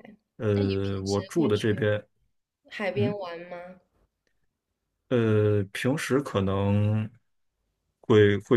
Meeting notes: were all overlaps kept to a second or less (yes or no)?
no